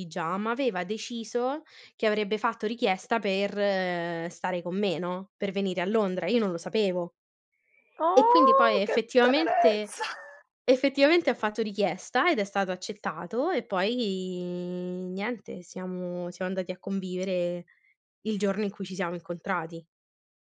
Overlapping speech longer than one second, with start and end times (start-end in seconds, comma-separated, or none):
8.1-10.0